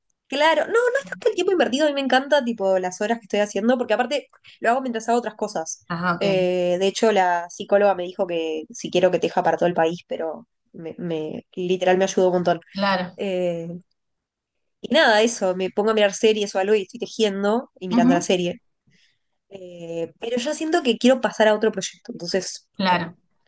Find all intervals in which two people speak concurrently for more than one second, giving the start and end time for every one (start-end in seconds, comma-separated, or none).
none